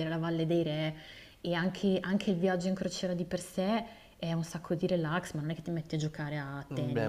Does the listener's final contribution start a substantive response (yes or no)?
yes